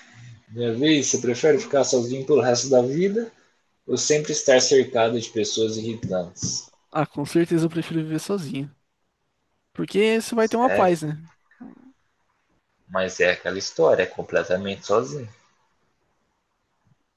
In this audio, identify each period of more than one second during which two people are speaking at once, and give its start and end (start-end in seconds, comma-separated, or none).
none